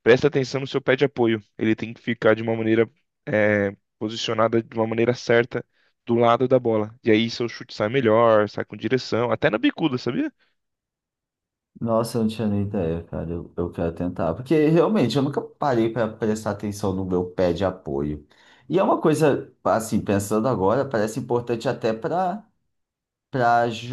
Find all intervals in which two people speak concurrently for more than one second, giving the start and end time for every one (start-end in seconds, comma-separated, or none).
none